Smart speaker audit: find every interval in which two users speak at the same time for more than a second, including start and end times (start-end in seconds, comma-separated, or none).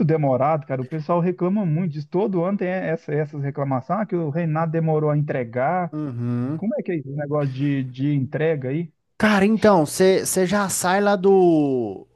none